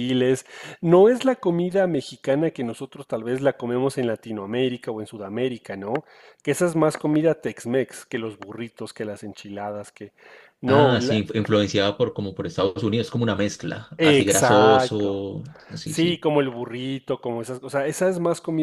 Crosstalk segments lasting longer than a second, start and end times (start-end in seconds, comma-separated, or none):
14.0-15.2